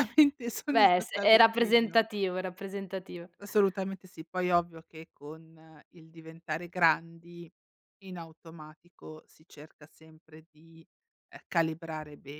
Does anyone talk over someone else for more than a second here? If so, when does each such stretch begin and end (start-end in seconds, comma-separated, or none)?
0.7-2.0